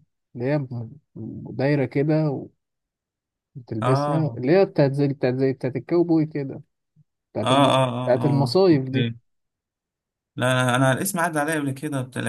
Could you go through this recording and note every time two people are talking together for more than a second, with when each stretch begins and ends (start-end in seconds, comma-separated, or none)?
7.4-9.1